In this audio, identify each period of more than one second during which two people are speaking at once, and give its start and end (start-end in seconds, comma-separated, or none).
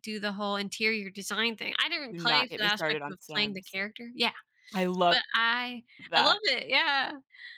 2.1-3.8